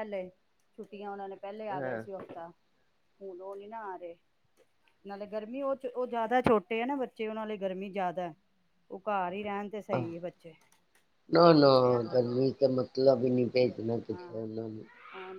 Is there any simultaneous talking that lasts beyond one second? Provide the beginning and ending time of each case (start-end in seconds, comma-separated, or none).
none